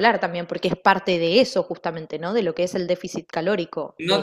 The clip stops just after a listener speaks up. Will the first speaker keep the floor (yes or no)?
no